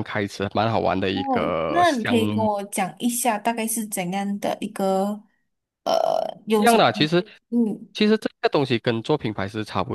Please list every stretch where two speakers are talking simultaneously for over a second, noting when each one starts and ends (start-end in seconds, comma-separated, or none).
1.1-2.5